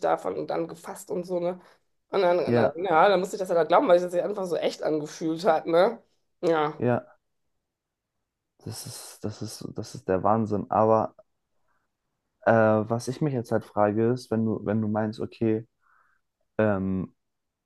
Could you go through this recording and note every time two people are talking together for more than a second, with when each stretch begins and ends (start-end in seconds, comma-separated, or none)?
none